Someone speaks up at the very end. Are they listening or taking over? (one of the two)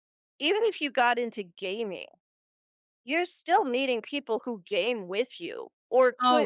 taking over